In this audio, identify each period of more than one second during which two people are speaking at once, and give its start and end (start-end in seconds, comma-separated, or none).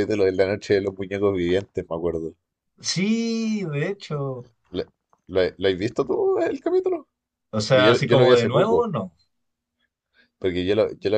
7.6-8.9